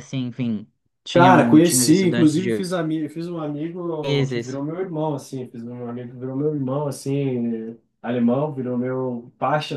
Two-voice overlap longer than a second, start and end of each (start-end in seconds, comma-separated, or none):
1.1-2.7